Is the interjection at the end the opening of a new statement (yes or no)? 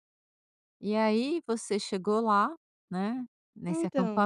no